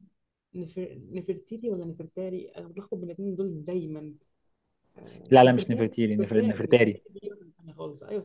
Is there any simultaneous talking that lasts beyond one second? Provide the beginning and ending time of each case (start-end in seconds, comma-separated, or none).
5.3-7.0